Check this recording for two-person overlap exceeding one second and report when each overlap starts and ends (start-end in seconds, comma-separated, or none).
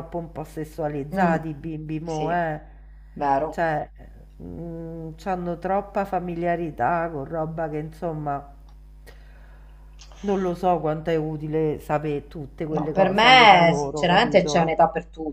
12.7-14.8